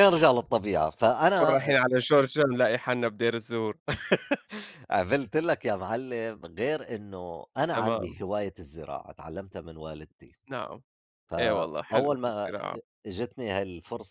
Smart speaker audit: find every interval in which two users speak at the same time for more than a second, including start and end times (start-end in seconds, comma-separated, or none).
11.4-12.6